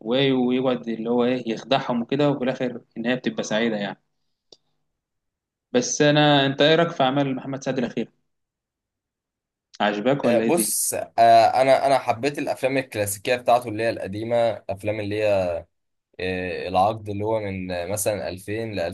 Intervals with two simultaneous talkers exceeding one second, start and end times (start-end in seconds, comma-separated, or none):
none